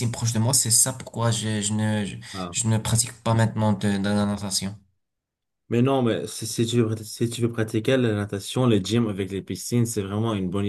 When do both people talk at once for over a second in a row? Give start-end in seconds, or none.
none